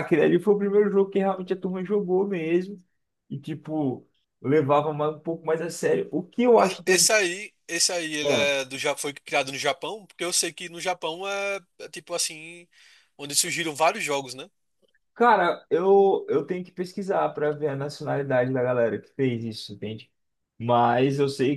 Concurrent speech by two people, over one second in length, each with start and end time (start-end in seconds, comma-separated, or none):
none